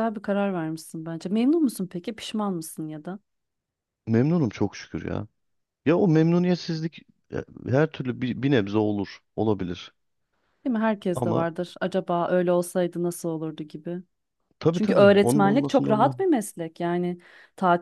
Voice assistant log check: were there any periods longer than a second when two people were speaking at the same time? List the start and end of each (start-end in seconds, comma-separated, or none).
14.7-16.2